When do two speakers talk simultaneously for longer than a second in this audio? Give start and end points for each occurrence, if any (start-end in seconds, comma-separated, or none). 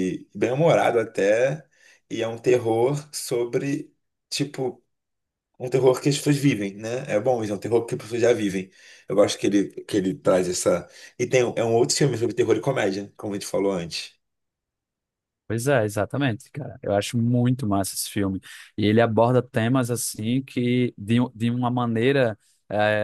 none